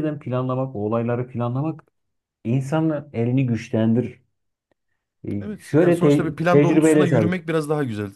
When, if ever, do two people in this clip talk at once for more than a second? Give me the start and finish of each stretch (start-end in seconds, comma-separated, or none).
5.4-7.5